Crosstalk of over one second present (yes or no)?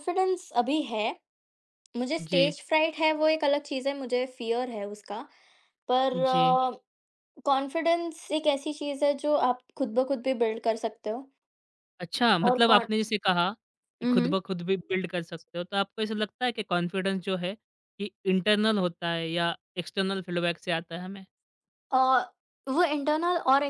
no